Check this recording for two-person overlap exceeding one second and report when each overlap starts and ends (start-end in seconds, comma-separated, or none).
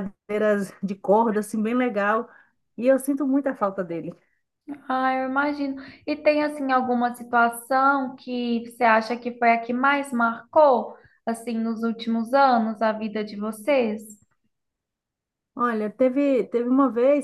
none